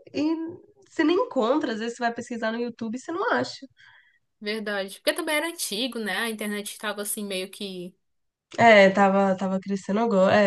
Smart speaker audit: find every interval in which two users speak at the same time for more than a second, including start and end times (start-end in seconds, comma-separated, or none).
none